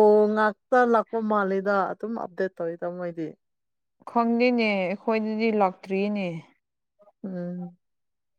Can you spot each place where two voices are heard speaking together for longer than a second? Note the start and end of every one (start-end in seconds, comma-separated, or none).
none